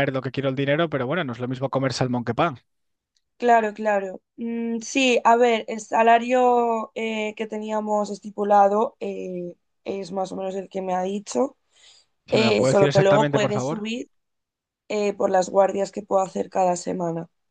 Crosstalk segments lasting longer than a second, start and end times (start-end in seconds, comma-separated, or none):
12.3-13.8